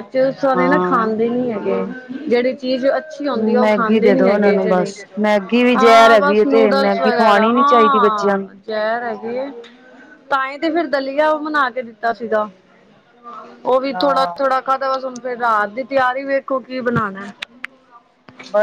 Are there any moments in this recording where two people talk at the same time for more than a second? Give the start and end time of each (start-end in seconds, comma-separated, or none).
3.4-4.9, 5.8-8.5